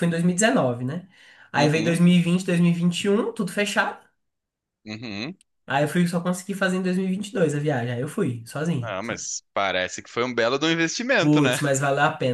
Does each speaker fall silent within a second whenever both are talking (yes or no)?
yes